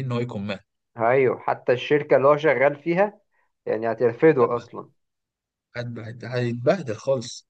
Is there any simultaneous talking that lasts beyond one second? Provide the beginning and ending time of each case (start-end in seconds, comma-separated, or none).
none